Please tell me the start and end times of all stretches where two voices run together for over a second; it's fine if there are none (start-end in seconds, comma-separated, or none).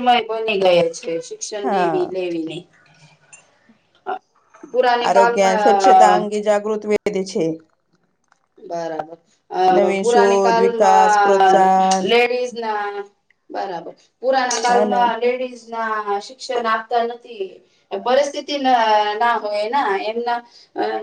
9.8-11.6